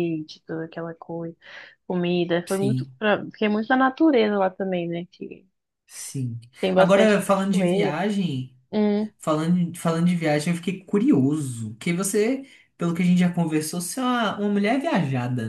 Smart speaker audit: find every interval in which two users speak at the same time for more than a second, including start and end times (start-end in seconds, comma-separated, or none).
6.7-8.0